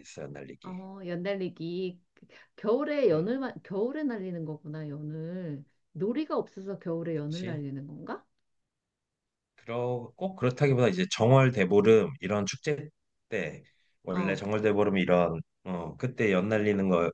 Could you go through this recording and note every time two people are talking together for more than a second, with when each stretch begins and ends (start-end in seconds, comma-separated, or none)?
none